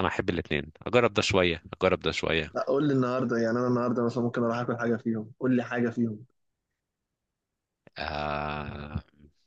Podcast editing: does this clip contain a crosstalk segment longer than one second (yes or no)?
no